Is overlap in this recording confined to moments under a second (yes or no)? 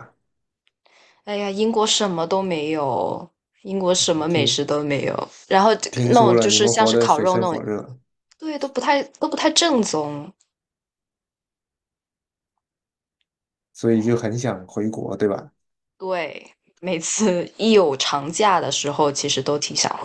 no